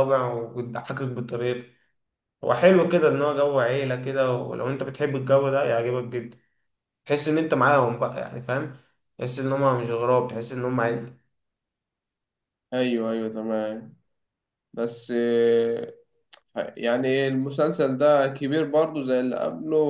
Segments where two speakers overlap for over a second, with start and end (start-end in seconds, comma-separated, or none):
none